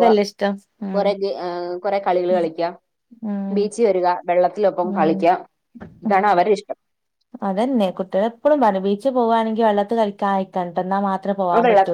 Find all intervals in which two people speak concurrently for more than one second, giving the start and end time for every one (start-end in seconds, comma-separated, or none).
none